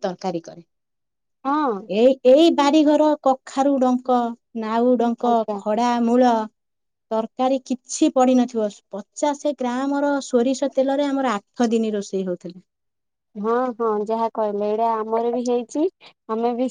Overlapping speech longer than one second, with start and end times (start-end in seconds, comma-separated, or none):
none